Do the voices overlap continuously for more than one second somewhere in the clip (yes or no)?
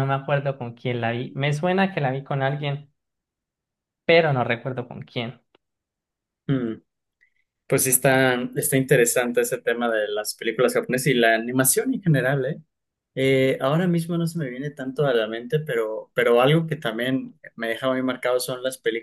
no